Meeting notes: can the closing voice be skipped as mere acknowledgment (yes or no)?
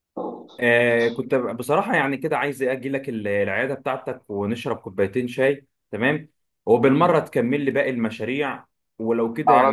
yes